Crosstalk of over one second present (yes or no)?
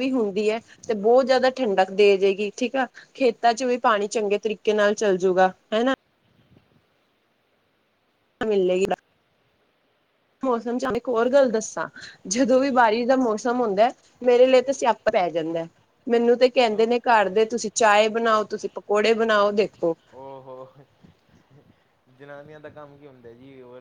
no